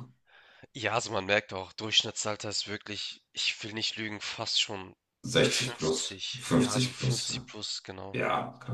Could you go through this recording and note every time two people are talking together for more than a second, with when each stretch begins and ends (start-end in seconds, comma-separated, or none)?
5.4-7.5